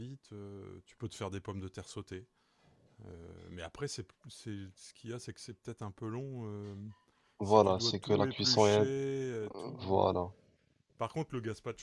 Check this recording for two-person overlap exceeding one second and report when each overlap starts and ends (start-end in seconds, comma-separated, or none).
7.4-8.9